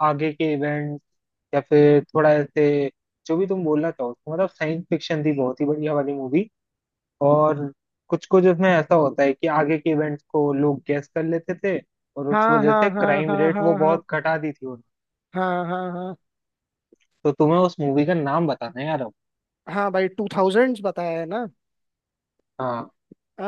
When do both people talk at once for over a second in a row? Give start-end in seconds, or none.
12.3-14.0